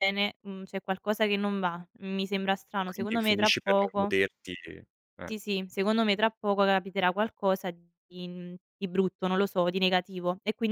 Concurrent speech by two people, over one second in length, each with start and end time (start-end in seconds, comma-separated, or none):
2.8-4.1